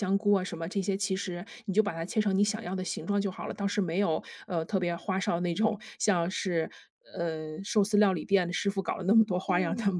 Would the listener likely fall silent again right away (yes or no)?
no